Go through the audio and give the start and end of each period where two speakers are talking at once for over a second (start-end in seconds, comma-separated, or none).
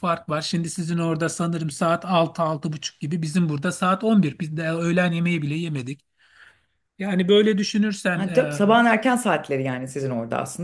none